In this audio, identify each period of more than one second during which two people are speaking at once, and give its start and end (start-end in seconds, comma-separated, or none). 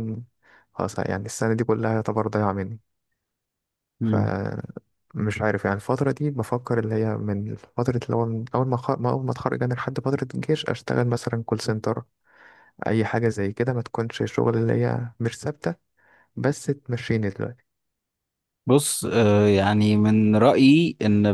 none